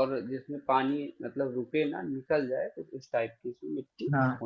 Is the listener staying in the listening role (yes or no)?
no